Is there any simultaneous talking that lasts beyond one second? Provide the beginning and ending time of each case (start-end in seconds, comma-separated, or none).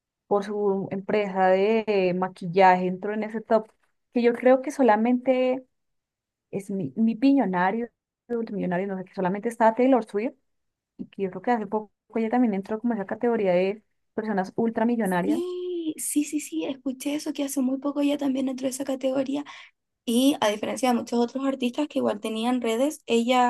none